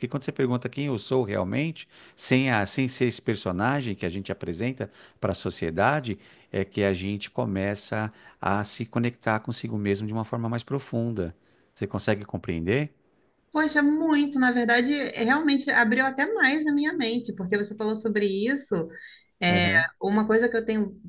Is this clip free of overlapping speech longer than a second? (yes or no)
yes